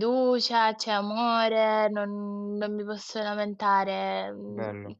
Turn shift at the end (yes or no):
no